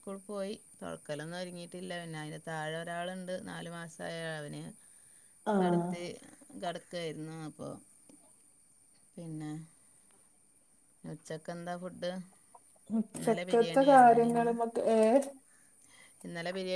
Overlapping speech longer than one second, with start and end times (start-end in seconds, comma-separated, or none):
13.2-14.5